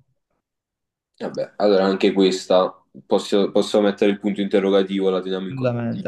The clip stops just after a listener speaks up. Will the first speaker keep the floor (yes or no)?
no